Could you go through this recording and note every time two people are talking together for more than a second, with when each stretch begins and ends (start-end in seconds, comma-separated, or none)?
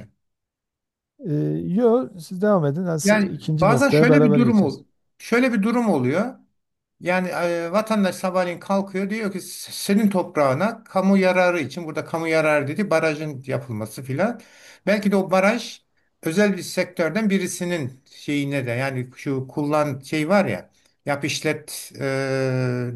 3.0-4.8